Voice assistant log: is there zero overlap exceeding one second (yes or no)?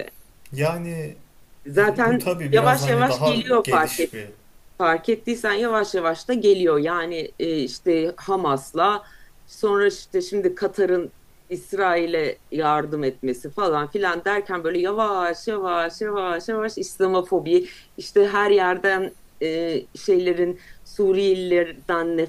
no